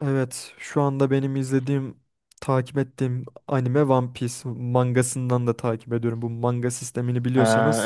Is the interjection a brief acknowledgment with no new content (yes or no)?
no